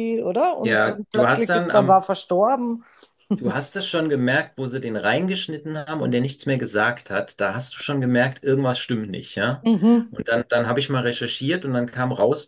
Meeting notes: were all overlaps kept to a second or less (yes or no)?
no